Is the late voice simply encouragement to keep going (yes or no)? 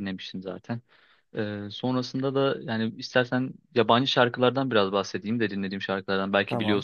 yes